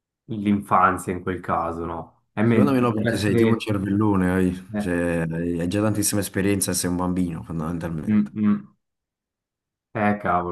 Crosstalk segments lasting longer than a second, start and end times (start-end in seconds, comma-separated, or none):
2.4-3.6